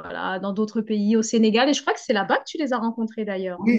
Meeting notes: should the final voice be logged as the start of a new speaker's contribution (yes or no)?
yes